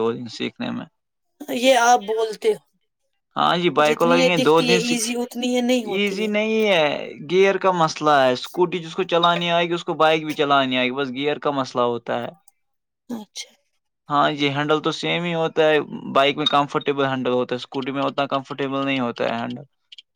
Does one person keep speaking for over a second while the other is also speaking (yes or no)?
yes